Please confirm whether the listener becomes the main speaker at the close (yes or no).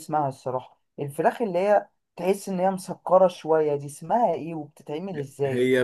yes